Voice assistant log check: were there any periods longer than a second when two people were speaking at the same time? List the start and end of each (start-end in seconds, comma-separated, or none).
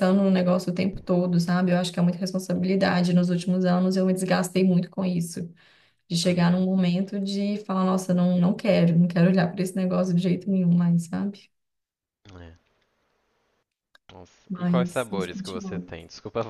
14.5-15.8